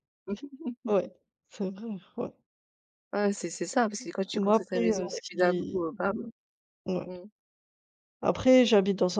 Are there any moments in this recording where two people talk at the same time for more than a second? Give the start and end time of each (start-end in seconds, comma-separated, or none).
4.3-5.8